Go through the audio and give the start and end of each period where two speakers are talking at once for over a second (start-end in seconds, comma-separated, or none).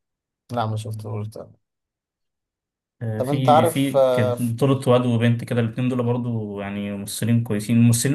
3.2-4.5